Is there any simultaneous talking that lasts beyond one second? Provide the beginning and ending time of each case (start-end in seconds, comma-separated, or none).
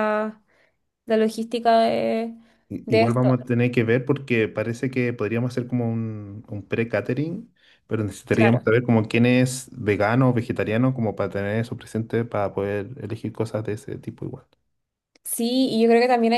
none